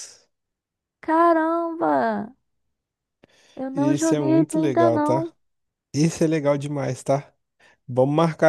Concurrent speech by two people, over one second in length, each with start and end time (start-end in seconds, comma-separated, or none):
3.7-5.3